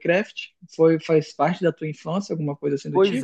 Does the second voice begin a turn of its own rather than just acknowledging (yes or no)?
yes